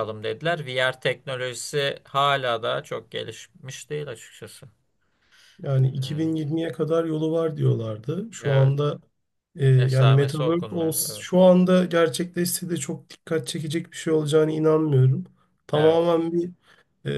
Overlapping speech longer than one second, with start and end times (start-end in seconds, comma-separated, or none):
9.8-11.3